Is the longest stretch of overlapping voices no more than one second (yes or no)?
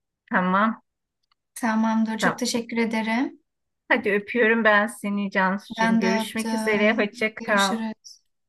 no